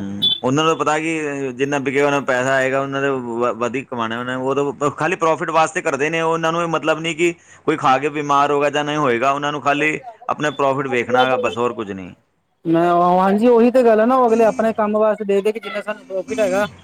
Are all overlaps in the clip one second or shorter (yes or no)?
yes